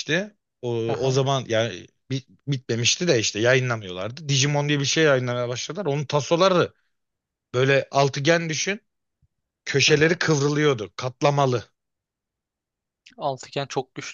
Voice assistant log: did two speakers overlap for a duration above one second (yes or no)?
no